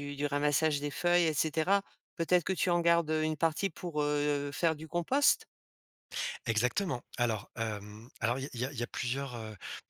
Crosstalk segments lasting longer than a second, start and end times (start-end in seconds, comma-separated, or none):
none